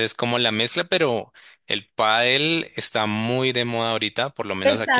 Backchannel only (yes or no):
no